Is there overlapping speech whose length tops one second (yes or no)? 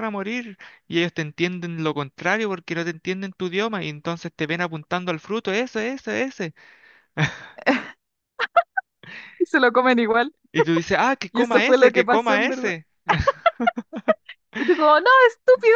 yes